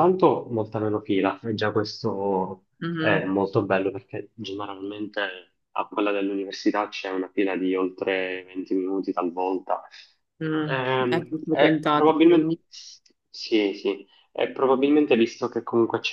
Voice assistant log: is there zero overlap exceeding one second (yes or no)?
no